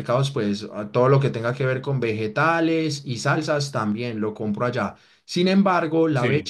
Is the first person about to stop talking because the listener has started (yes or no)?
no